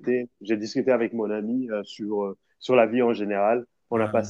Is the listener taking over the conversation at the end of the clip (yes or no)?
no